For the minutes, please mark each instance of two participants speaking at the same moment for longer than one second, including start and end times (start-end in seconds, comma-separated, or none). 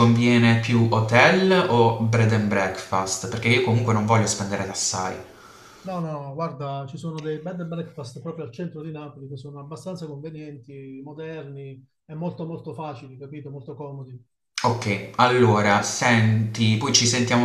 none